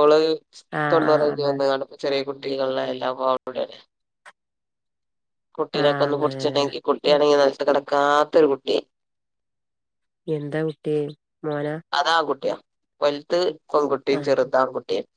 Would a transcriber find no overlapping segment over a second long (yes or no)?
no